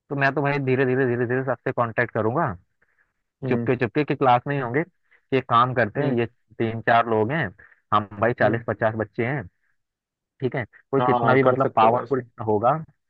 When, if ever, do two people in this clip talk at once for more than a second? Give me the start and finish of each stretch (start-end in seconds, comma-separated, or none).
11.0-12.2